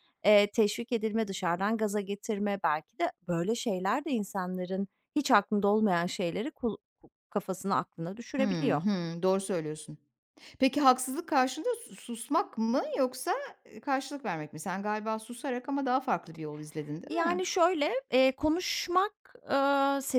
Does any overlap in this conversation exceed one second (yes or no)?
no